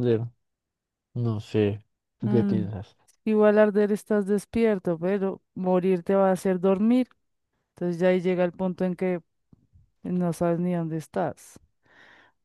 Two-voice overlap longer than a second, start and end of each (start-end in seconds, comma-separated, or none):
none